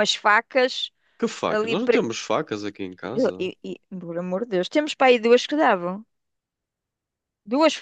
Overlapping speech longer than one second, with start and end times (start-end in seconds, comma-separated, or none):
none